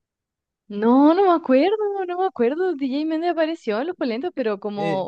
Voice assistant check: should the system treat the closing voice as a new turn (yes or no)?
no